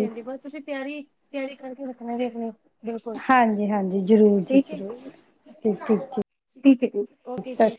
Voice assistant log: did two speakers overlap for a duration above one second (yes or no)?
no